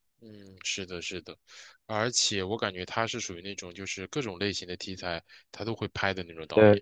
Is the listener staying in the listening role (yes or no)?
yes